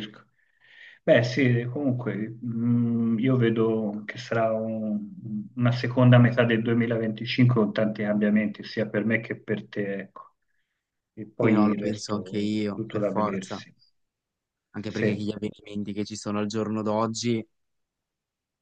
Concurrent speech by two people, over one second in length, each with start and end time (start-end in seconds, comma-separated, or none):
11.4-13.6